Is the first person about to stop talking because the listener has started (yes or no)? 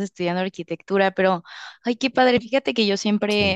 no